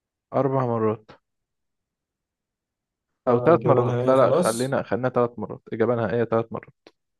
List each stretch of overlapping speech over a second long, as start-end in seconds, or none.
3.3-4.8